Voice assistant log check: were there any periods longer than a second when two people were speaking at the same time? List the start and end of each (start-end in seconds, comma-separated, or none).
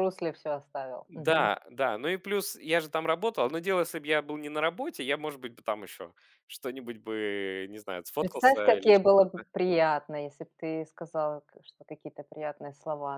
8.2-9.4